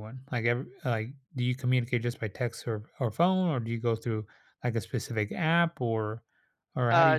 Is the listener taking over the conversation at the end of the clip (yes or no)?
yes